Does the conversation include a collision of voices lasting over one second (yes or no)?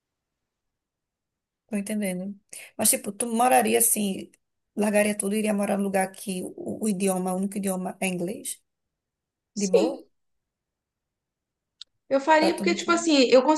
no